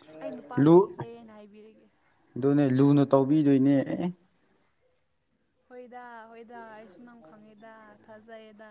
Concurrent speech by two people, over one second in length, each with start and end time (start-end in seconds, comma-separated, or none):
none